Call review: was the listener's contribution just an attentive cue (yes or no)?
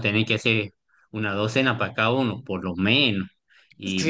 no